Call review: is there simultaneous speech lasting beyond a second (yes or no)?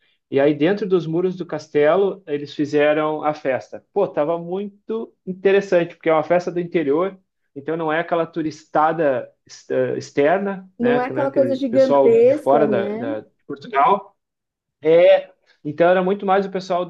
yes